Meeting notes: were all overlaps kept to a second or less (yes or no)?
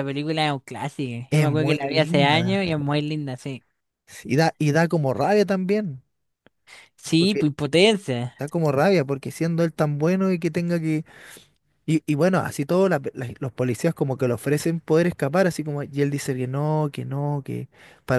no